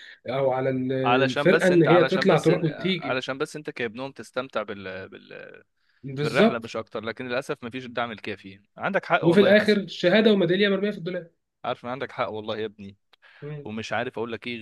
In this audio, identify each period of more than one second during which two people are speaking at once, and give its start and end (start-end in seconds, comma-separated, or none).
1.3-3.2